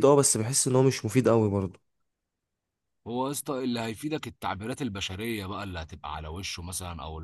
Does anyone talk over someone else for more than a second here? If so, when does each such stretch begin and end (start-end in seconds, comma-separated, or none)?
none